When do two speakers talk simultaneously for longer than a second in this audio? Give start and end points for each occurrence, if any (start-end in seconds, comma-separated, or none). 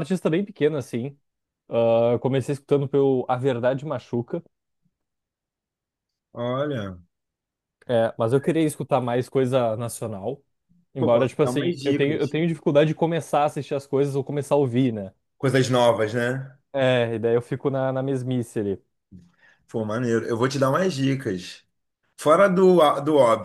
11.0-12.4